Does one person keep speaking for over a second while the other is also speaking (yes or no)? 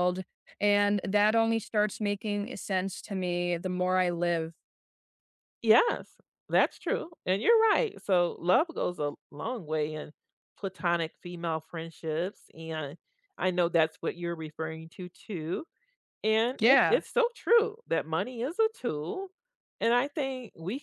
no